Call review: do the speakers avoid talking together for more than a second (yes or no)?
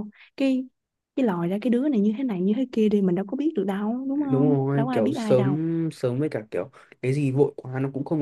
no